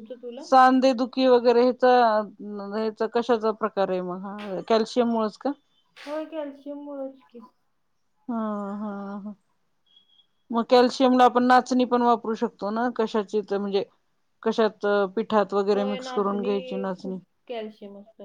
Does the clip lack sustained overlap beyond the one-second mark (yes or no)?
no